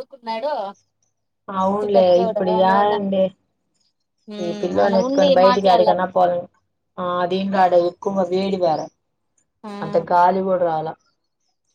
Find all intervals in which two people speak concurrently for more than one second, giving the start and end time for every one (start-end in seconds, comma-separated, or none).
4.4-6.3